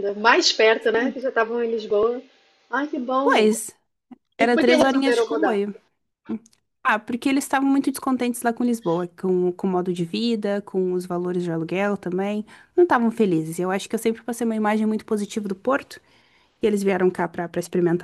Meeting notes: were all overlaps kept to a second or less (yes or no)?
no